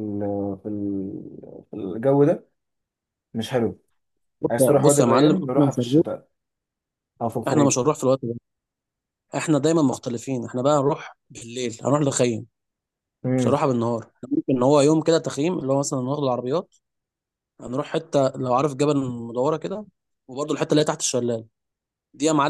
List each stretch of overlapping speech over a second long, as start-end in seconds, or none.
4.5-6.0